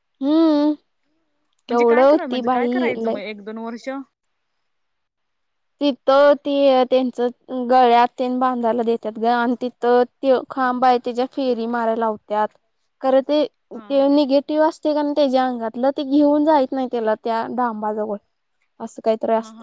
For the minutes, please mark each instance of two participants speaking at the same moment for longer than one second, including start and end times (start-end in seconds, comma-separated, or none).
1.7-3.2